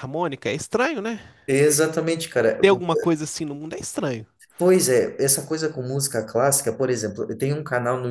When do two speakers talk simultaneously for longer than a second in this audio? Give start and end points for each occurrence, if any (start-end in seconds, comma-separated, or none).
none